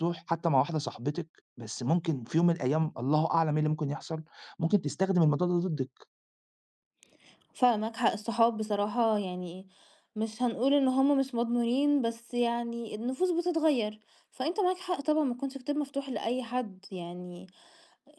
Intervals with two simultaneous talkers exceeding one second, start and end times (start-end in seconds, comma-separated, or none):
none